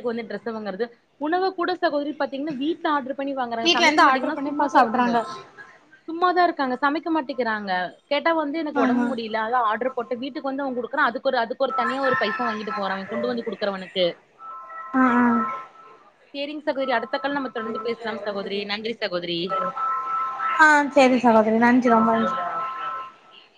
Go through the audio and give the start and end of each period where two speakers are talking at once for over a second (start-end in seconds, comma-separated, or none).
3.7-5.1